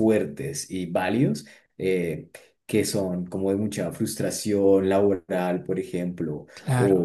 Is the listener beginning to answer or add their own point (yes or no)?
no